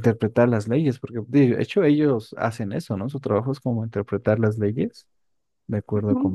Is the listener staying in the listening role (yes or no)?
no